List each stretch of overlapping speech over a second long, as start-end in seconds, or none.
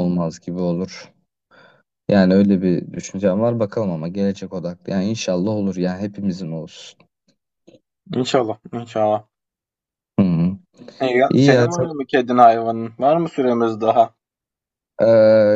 none